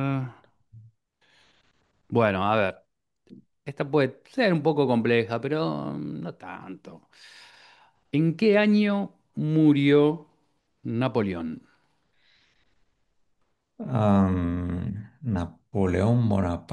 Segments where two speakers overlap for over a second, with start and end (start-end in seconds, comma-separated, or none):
none